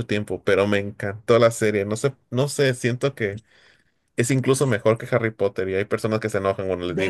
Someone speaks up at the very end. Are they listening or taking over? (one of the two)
taking over